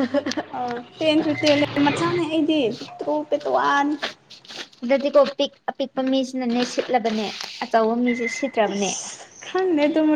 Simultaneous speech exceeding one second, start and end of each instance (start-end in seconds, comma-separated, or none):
none